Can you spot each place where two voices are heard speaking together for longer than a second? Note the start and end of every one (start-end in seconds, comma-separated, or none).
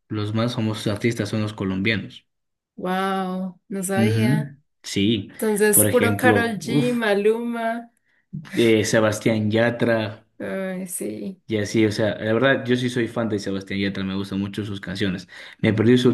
5.7-7.0